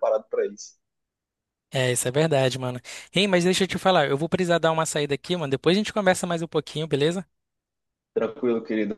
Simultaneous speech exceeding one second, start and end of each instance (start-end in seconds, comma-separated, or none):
none